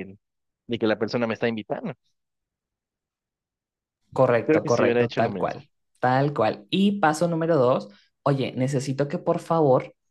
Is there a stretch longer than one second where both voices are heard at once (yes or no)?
yes